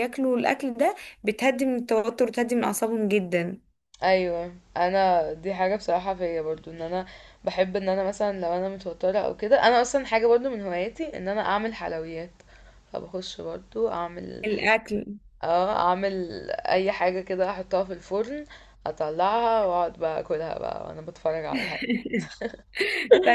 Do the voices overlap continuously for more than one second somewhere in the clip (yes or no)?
no